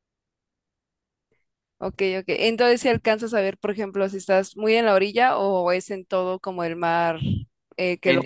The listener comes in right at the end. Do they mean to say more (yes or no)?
yes